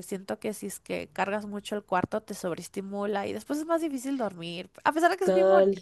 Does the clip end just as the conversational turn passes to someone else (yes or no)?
yes